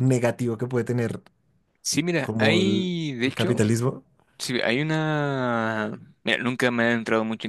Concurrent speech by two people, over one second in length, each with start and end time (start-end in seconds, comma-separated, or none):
2.2-3.6